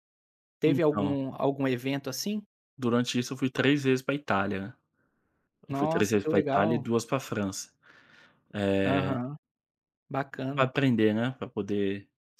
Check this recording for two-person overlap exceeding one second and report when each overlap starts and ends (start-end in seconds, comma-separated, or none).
5.7-6.9